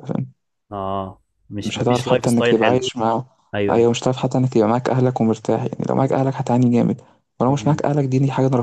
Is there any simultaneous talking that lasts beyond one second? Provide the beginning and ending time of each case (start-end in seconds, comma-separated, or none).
1.6-2.8